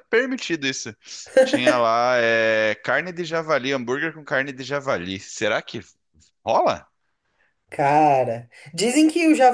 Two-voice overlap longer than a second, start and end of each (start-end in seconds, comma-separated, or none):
none